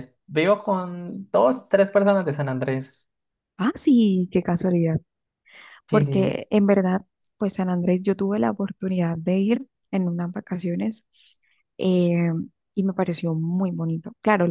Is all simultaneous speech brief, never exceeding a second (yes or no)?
yes